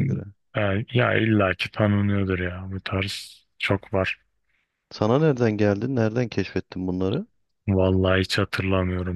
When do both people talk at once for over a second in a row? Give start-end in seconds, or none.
none